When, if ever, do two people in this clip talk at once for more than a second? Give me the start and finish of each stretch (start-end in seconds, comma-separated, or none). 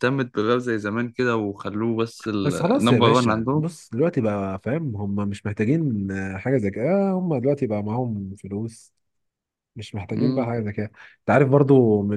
2.4-3.7